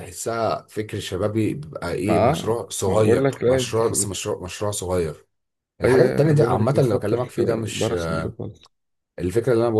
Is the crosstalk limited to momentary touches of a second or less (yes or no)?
no